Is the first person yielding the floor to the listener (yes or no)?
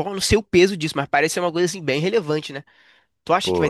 no